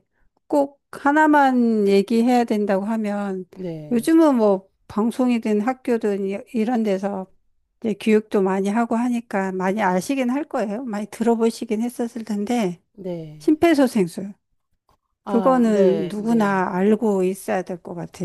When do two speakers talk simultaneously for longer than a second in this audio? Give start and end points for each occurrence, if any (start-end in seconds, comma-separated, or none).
15.3-16.6